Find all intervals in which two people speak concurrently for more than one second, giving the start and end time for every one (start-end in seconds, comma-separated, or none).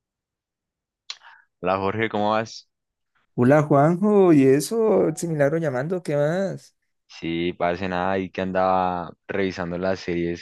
none